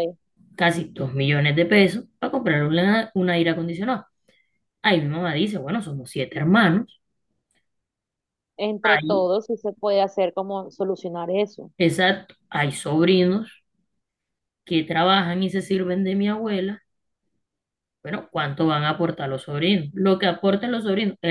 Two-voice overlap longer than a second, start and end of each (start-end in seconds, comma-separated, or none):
none